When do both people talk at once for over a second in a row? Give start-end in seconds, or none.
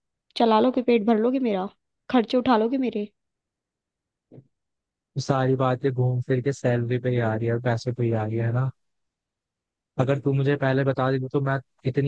none